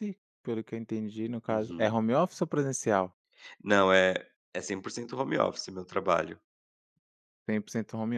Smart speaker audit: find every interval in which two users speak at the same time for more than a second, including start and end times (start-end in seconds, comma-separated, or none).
none